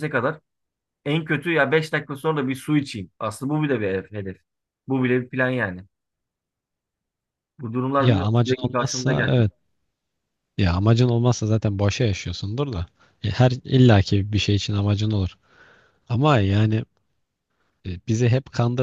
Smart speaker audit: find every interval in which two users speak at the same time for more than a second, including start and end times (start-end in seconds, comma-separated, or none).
8.0-9.5